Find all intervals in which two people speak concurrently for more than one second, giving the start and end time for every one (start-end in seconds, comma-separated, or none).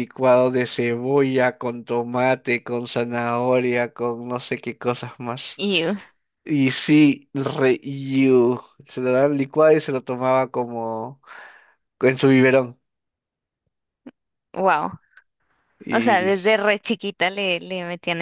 none